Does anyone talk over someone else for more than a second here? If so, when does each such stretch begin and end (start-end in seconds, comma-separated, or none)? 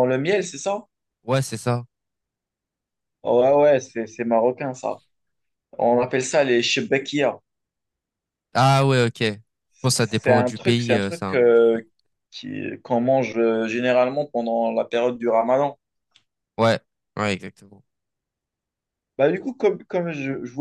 10.0-11.8